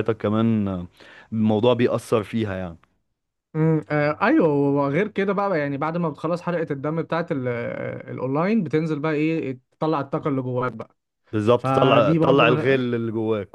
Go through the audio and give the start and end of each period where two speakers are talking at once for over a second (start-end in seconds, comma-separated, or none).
11.6-12.8